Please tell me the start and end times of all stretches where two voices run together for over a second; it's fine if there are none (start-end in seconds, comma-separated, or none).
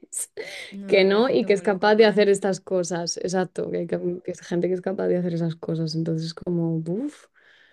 0.9-2.3